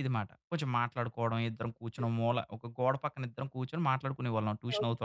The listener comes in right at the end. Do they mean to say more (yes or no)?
no